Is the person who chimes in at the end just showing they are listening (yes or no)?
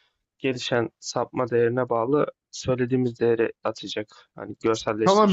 no